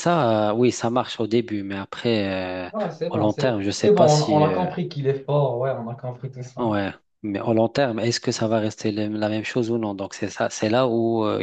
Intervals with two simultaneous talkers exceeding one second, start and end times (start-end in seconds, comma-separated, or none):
3.1-4.7